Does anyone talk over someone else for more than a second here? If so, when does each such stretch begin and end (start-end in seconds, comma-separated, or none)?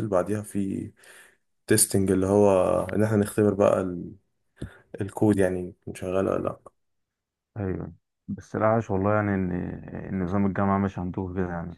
none